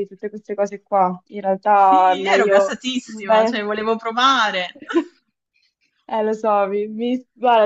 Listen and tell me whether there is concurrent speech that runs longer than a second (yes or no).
yes